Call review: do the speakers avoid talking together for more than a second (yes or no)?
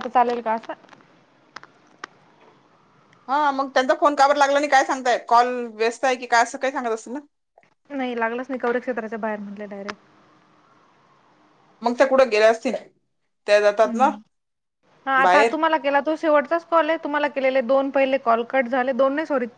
yes